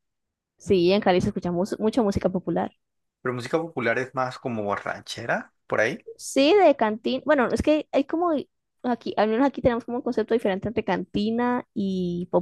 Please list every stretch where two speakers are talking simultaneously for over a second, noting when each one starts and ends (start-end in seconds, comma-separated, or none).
none